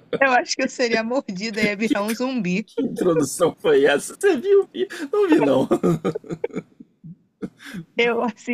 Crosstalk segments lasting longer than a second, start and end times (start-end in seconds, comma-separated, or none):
none